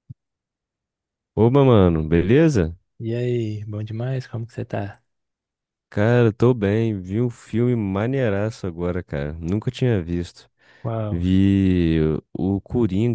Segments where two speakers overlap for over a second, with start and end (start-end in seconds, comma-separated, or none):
none